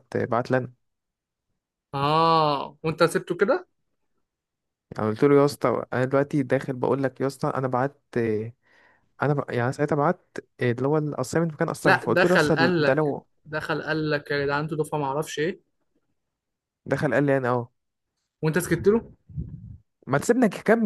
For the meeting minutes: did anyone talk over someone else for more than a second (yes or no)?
yes